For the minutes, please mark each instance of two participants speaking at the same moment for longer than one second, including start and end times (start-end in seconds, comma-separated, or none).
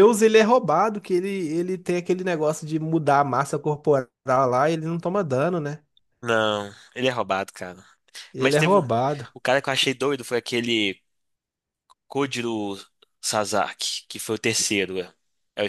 none